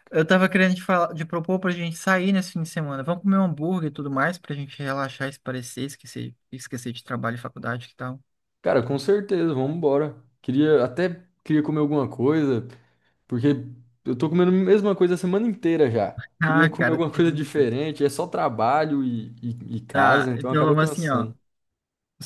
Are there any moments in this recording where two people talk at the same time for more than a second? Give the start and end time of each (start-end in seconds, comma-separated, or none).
16.4-17.7, 19.9-21.3